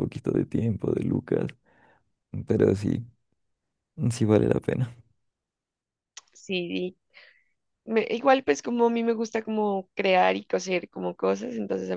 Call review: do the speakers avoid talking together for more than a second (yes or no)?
yes